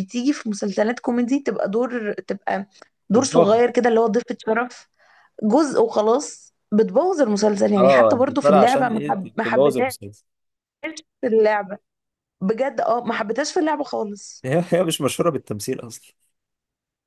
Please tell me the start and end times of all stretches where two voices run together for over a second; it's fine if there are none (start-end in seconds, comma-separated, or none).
7.8-9.9